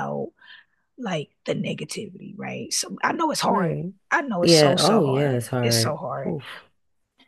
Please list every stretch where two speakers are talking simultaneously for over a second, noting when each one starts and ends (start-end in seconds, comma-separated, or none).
4.4-6.3